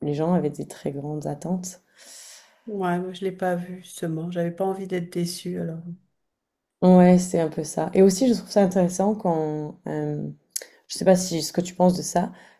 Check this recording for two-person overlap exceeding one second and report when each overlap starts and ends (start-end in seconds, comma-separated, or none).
none